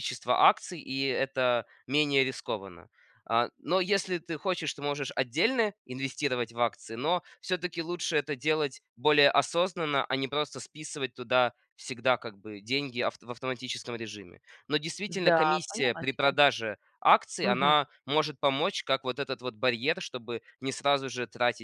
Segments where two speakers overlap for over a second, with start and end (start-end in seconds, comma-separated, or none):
15.1-16.4